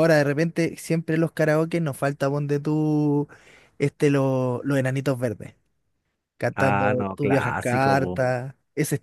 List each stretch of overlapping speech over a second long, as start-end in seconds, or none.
6.5-8.2